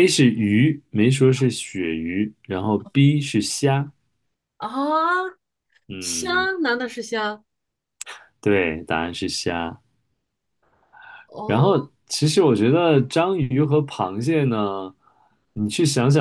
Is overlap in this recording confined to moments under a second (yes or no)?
yes